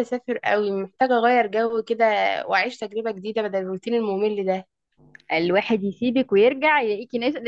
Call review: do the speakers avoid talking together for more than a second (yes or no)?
yes